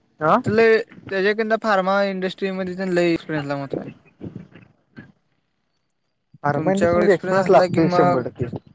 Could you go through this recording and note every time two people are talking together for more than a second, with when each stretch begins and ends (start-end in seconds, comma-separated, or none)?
6.5-8.2